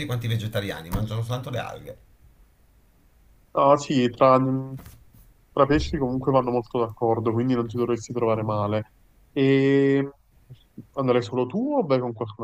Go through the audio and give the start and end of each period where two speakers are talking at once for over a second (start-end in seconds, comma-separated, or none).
none